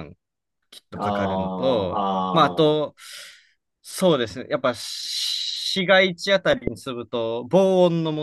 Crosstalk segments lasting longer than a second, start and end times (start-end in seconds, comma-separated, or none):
1.0-2.8